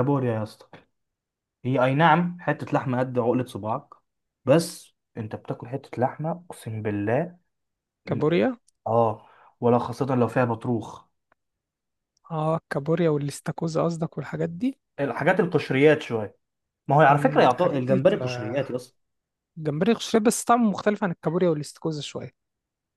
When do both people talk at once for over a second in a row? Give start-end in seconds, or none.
17.1-18.6